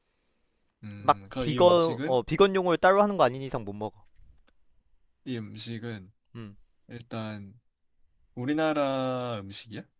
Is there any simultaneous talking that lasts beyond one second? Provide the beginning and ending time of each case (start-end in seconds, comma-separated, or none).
1.0-2.2